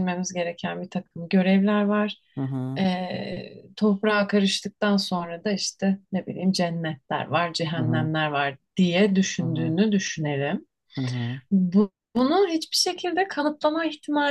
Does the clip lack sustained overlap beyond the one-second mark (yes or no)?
yes